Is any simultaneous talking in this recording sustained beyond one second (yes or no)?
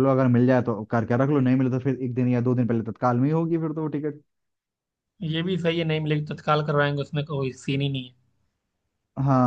no